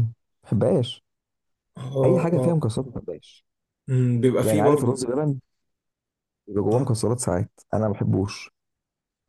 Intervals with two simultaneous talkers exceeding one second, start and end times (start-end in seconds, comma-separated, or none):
none